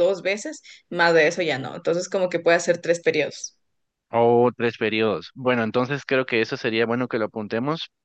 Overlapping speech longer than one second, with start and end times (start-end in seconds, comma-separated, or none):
none